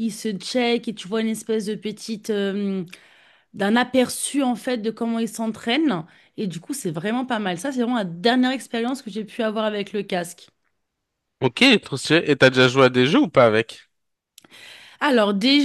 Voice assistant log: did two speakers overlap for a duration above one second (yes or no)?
no